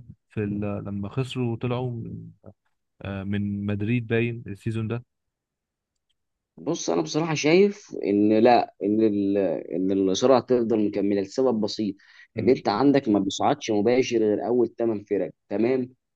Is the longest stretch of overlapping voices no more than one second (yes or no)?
yes